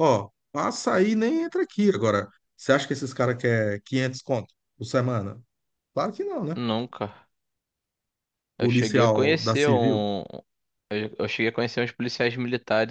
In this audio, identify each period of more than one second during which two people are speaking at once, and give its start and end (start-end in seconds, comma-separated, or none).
8.6-10.0